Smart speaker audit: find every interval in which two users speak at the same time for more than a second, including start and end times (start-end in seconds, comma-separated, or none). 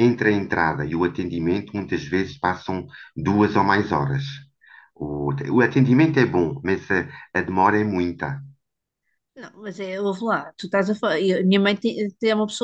none